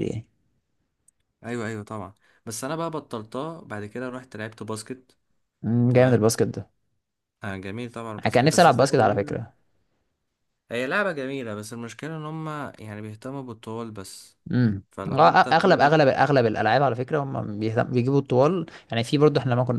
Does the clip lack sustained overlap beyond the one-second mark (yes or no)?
no